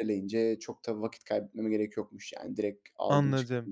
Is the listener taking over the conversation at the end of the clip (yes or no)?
yes